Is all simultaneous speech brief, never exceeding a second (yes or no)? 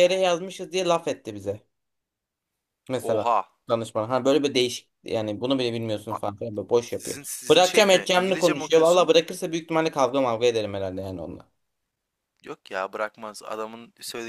no